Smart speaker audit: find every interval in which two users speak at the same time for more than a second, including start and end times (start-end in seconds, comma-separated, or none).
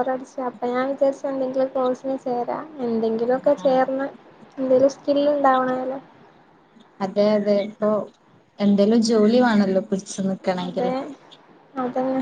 none